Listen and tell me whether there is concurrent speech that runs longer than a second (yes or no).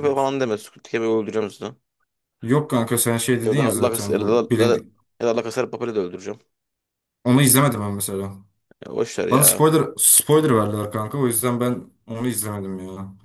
yes